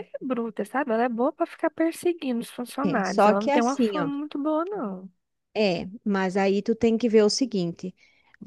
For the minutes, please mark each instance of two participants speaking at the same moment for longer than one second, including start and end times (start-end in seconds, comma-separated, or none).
2.8-4.1